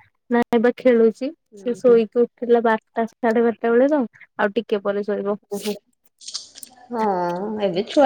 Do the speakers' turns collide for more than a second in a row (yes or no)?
no